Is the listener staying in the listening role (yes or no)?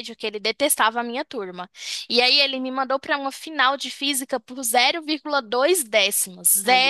yes